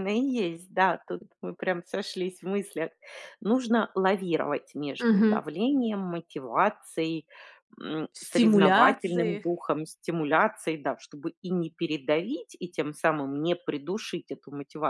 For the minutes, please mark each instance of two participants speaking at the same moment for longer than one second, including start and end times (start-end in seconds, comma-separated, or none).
8.2-9.4